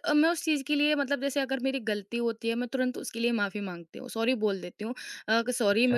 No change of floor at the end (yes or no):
yes